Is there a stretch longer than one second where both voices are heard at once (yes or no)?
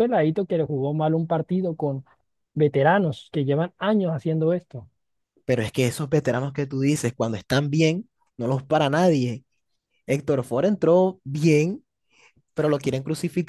no